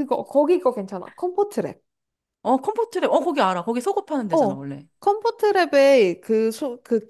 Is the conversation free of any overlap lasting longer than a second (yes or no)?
yes